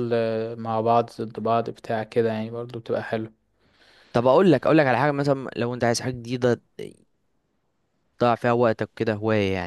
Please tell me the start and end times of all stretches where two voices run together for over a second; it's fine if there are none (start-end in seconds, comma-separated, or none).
none